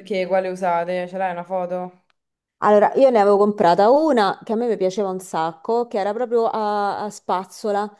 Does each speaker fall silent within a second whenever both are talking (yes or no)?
yes